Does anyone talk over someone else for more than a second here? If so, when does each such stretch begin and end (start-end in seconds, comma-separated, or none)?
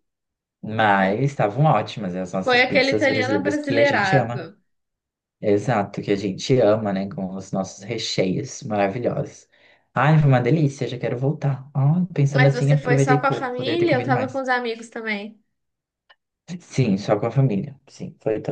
2.4-4.4, 12.3-14.4